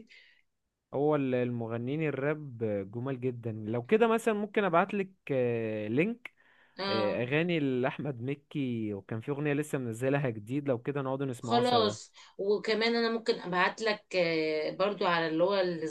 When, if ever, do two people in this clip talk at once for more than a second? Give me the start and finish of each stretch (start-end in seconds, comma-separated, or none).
none